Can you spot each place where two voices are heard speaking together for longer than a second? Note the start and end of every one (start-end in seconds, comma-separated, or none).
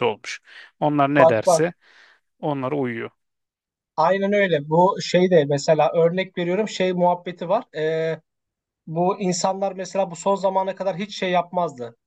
none